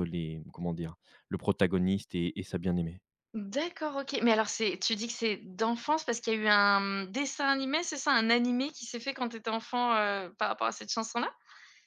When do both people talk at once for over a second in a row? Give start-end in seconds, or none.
none